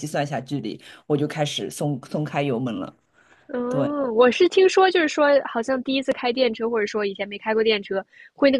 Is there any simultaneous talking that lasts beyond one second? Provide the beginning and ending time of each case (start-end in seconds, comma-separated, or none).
none